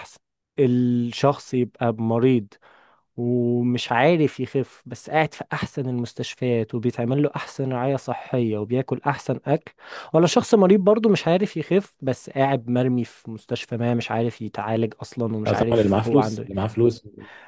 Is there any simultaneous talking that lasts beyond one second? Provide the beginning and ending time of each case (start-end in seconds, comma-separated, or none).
15.4-16.7